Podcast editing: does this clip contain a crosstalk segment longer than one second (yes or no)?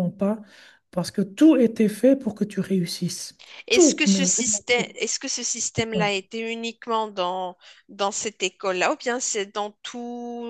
yes